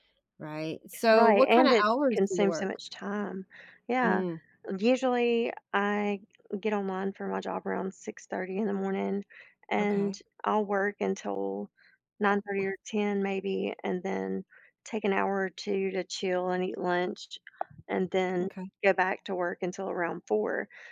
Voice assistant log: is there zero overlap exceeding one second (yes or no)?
no